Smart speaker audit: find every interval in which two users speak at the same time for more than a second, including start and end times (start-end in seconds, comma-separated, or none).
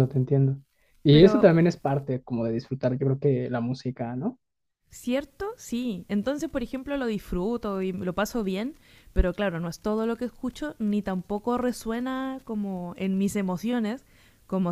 none